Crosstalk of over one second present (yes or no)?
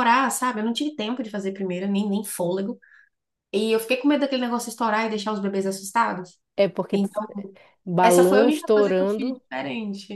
yes